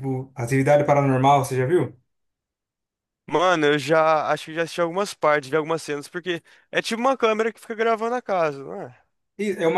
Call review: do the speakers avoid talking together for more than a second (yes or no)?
yes